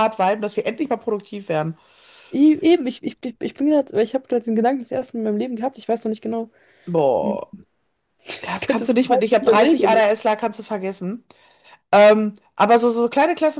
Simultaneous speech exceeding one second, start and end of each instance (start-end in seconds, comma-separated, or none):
8.4-10.0